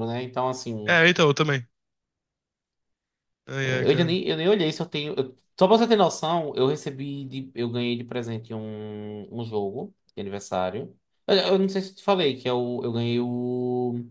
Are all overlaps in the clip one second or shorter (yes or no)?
yes